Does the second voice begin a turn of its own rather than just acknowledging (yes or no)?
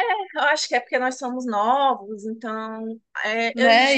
yes